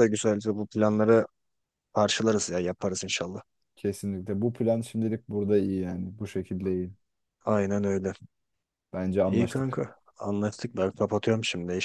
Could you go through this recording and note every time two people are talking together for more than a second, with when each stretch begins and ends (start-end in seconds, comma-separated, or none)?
none